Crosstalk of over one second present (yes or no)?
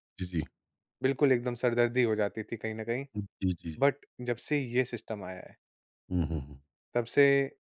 no